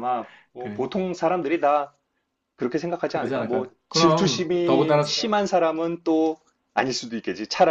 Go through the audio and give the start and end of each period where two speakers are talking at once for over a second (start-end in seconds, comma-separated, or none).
3.1-5.2